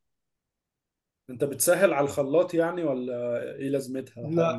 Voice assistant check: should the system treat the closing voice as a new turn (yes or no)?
yes